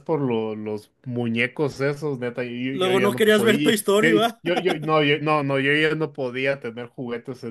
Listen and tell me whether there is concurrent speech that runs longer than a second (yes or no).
yes